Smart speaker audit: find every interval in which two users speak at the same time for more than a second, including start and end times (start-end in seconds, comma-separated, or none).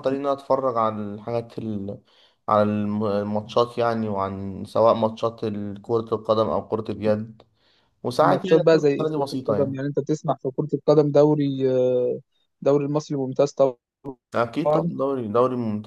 8.2-9.8